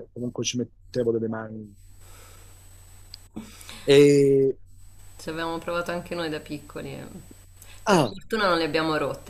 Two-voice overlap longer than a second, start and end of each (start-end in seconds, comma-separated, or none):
none